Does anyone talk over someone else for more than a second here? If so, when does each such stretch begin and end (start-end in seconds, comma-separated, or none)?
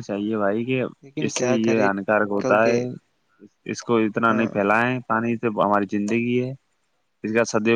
1.2-2.8